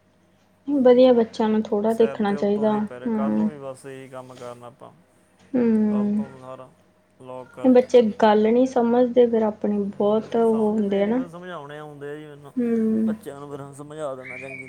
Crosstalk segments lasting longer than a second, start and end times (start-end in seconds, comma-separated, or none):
1.8-3.5